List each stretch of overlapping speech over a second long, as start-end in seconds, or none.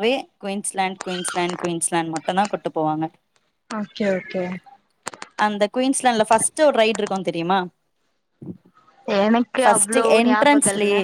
none